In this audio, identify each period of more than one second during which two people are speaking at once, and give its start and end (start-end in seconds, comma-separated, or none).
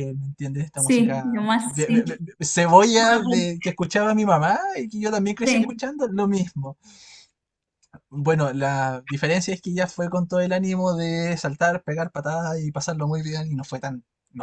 0.7-2.2